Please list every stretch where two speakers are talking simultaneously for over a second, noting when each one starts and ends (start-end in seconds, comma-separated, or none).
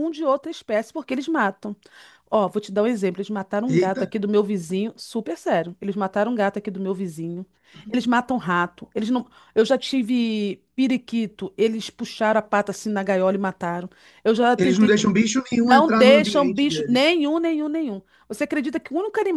15.6-17.0